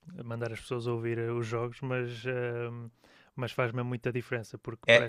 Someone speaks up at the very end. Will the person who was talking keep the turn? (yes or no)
yes